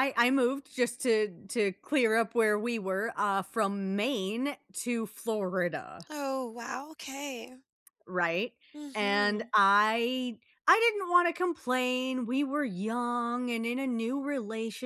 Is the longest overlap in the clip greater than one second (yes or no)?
no